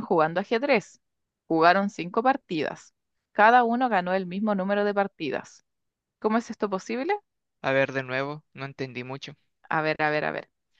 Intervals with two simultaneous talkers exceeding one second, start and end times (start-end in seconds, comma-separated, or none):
none